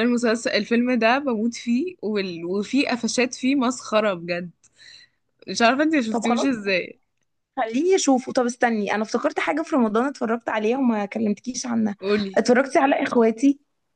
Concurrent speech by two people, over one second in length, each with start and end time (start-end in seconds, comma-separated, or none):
none